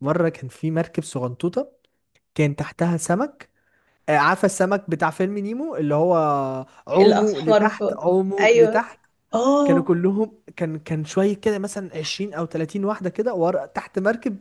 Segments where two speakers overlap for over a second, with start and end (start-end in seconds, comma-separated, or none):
6.9-8.8